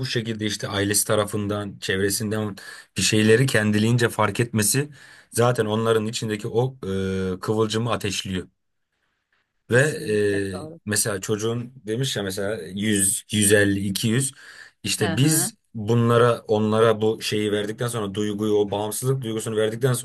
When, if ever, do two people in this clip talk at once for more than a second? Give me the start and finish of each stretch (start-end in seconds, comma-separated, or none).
none